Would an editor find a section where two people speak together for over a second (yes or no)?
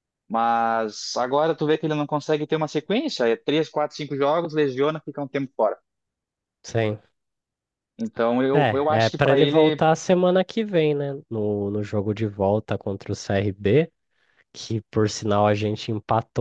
yes